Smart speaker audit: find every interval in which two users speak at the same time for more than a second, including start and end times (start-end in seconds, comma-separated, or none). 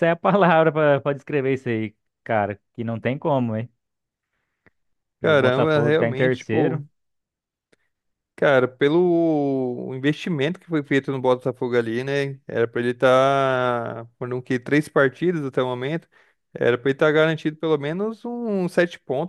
5.2-6.8